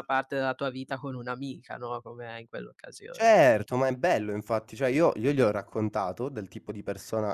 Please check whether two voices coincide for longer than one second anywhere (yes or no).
no